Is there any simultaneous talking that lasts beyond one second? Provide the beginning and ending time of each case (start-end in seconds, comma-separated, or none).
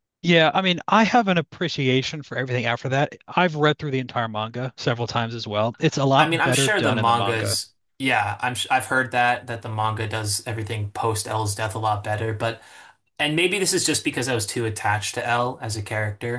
6.2-7.6